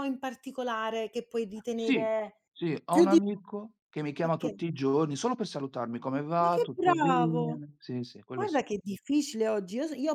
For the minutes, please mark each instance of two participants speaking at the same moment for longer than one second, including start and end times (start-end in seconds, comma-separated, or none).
6.4-7.6